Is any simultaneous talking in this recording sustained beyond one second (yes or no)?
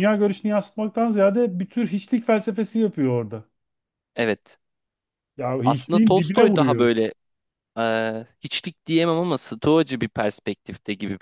yes